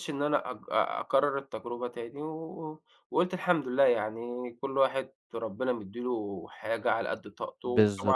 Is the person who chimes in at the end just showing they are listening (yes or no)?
yes